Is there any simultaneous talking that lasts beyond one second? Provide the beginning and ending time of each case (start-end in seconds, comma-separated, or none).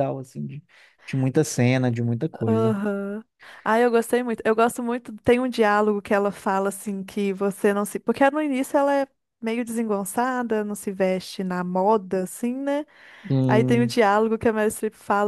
none